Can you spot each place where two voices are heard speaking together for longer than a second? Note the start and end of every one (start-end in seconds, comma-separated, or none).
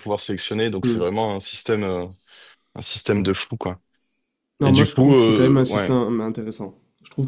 4.6-5.9